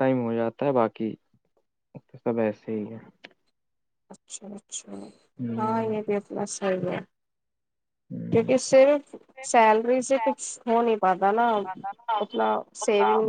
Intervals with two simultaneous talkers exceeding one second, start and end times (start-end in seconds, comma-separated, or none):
none